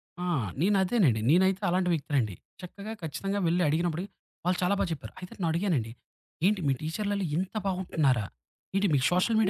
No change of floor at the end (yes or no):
no